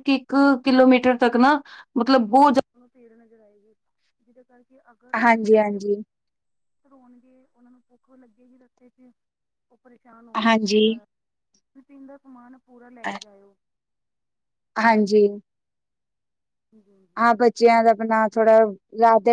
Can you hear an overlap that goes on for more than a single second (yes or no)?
no